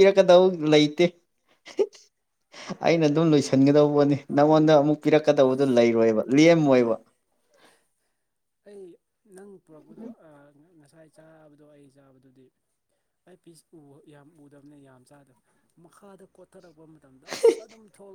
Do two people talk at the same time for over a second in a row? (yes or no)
no